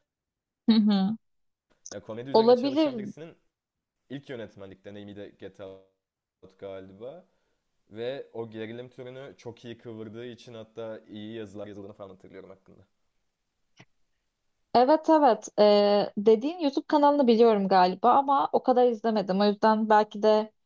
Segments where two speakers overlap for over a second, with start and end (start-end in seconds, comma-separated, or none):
none